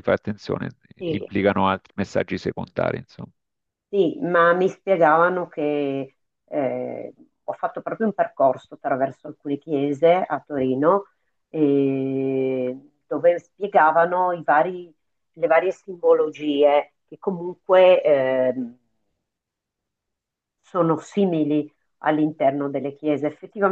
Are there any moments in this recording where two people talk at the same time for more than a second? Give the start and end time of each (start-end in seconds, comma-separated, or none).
none